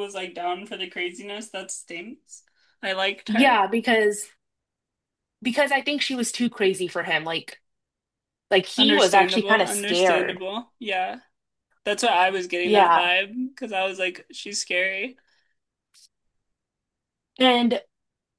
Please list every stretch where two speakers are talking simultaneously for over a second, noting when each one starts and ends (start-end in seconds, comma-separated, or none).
8.8-10.4